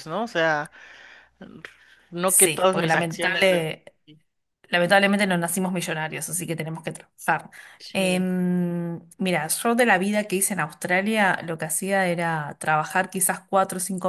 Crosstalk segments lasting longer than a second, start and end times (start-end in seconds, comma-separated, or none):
2.2-3.7